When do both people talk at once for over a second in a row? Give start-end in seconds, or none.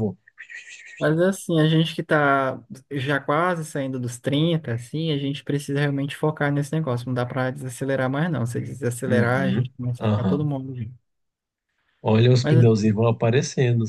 9.0-10.5